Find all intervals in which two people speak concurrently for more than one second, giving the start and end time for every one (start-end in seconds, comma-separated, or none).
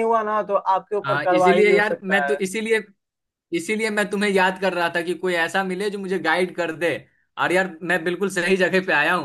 1.0-2.4